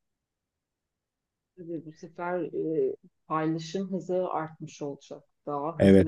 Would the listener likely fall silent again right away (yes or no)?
yes